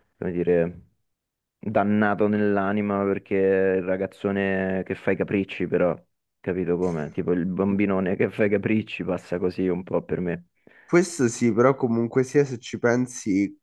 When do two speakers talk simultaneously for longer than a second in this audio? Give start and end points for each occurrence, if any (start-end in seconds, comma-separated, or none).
none